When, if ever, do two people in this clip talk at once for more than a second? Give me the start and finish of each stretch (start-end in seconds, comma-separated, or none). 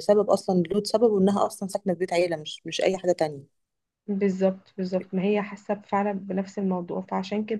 none